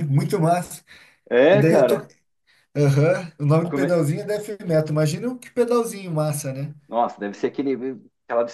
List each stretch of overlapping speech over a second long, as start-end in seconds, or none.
none